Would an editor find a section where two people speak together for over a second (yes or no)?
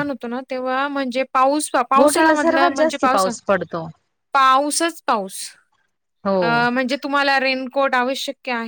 yes